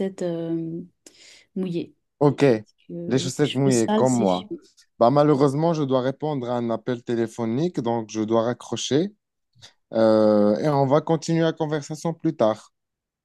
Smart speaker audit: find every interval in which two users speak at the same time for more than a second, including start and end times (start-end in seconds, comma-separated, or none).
3.1-4.5